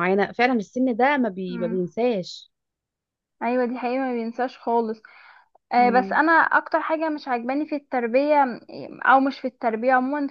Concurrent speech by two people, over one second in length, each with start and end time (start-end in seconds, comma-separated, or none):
none